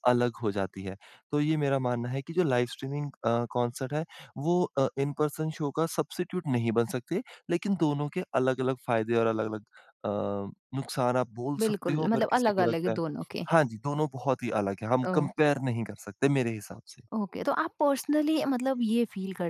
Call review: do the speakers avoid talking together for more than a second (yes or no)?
no